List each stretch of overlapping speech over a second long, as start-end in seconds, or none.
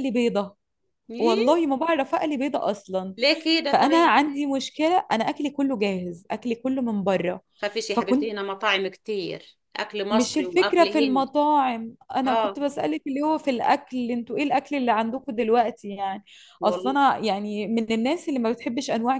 10.1-11.3